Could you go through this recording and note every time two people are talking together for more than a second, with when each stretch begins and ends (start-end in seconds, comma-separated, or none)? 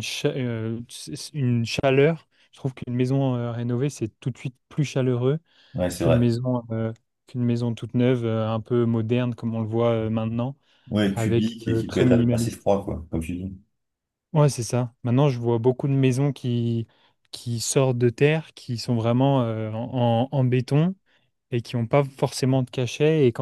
11.1-12.7